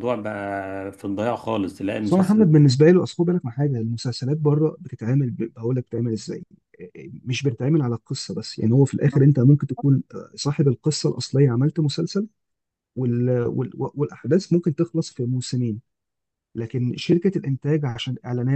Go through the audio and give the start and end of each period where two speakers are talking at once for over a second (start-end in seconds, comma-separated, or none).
none